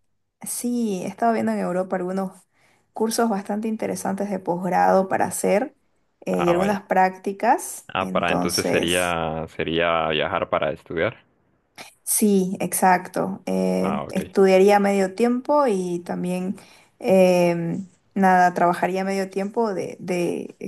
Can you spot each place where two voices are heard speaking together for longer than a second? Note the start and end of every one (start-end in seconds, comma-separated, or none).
7.9-9.1